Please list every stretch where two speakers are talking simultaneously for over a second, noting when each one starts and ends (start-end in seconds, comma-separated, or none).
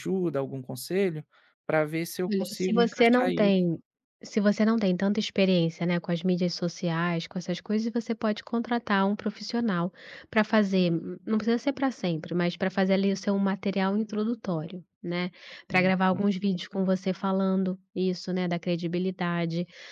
2.3-3.6